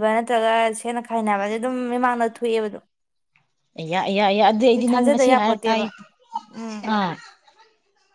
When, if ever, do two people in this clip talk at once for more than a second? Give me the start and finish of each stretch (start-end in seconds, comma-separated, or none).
none